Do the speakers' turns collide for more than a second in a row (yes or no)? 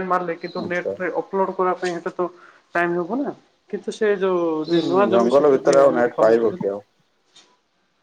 yes